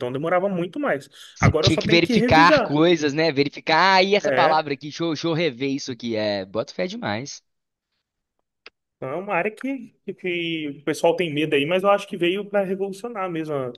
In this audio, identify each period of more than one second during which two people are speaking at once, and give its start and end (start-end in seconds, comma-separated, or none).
1.3-2.8